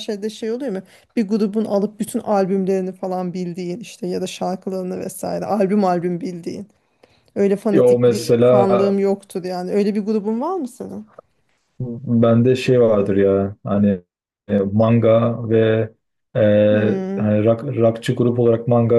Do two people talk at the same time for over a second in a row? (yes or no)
yes